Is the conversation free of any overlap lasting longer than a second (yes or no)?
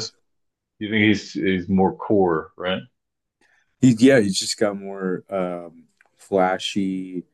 yes